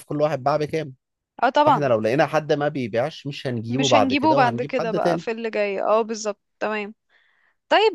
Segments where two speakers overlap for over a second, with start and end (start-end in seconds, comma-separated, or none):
3.7-5.2